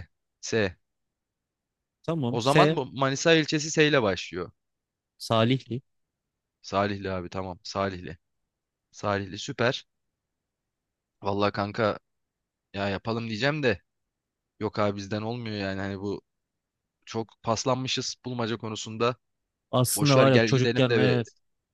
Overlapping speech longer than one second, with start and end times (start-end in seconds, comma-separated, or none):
19.9-21.2